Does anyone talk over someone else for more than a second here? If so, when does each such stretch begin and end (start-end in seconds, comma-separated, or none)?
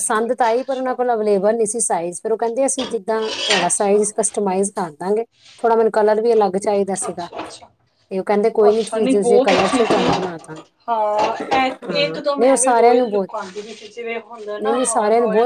8.7-10.6, 11.9-13.3